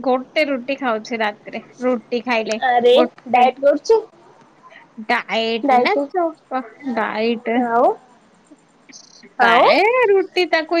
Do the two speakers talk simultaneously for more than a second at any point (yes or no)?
no